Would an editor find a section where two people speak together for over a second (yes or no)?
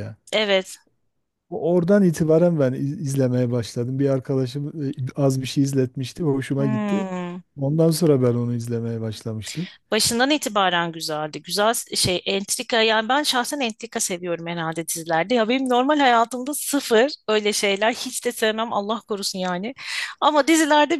no